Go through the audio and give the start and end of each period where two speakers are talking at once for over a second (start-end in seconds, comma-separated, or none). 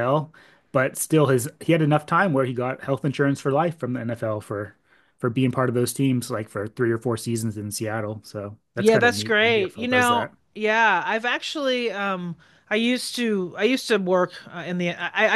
8.8-10.3